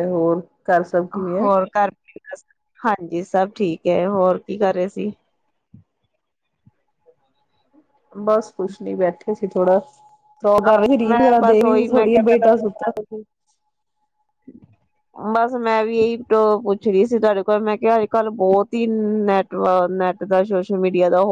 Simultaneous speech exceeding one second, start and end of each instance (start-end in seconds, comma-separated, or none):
11.0-12.9